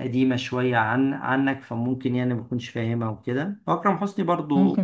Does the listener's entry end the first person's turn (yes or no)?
no